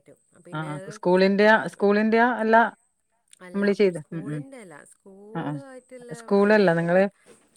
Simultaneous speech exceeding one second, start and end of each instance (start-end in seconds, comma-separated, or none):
5.4-7.0